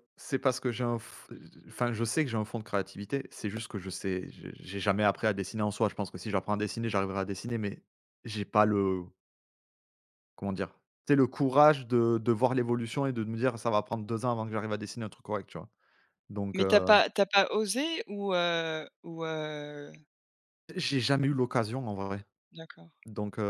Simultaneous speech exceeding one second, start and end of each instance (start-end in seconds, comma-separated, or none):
none